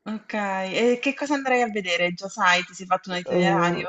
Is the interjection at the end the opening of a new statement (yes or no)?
yes